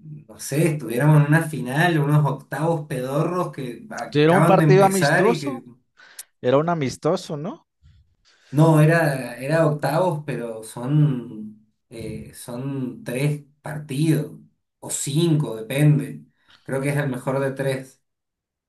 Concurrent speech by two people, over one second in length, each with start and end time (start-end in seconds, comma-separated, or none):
4.1-5.6